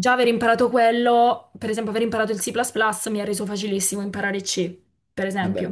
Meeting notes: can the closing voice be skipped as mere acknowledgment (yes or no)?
yes